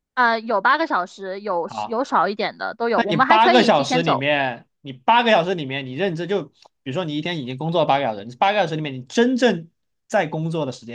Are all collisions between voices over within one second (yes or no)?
no